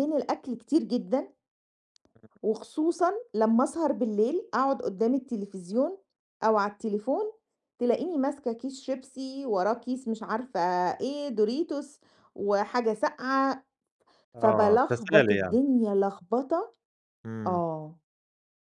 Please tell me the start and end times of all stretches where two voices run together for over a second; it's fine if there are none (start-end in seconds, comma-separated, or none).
14.4-15.6